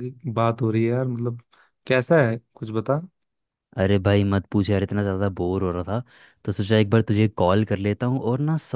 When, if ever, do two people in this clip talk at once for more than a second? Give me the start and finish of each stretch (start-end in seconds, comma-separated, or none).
none